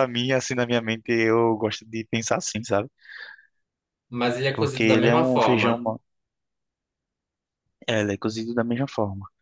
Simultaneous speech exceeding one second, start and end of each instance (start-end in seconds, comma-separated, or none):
4.5-5.9